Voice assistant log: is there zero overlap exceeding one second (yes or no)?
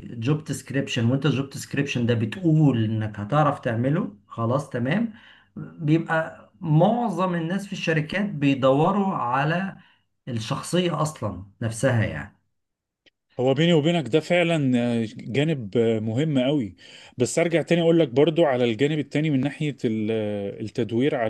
yes